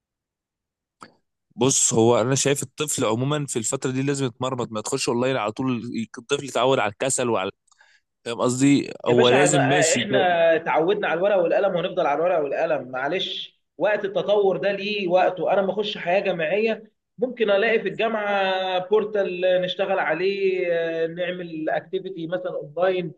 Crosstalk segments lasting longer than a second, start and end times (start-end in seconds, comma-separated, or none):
9.1-10.3